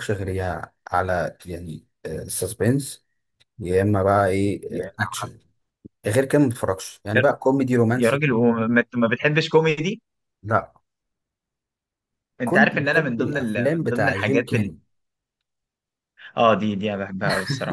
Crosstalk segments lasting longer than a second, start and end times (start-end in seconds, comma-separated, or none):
12.4-14.7